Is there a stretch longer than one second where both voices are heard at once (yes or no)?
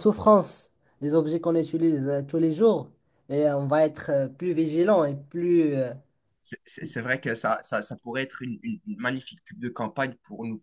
no